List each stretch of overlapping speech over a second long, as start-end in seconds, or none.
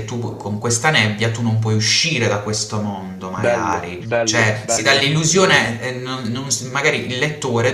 3.4-5.0